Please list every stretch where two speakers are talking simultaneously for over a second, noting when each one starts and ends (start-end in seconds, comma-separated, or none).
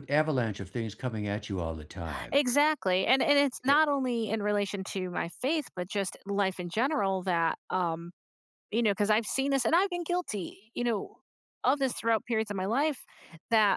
none